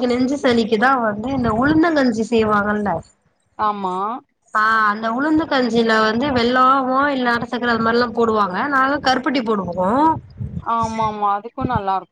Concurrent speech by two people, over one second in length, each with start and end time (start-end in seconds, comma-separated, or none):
none